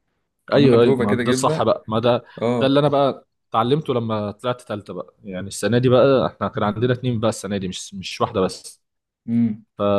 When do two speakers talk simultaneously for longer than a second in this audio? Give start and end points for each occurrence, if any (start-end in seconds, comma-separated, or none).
0.5-1.7